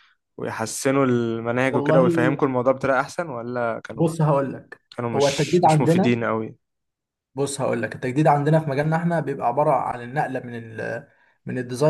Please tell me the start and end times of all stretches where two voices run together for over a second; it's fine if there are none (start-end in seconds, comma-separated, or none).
5.0-6.2